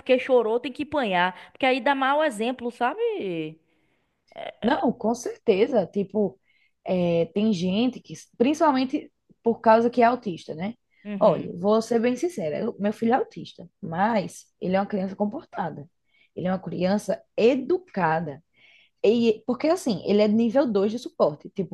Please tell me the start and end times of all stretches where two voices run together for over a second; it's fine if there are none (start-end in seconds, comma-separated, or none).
none